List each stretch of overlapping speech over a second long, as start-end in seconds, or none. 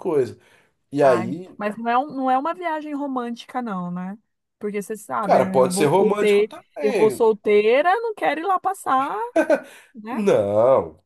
5.2-7.4